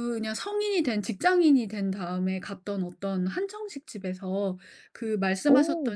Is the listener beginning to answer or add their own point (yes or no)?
no